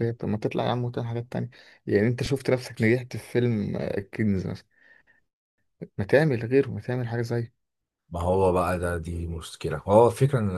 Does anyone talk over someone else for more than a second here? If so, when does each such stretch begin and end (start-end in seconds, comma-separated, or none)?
none